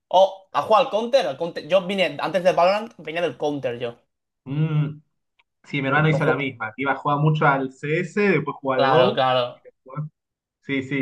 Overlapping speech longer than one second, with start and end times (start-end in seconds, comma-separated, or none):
none